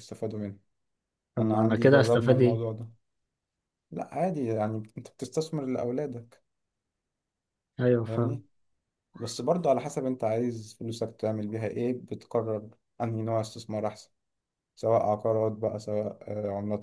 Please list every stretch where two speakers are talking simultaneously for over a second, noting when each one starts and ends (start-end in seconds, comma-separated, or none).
1.4-2.6